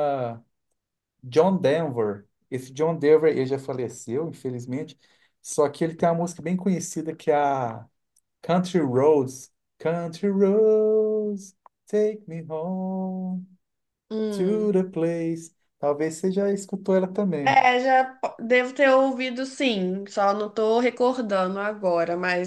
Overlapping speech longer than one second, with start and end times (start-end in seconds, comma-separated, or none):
none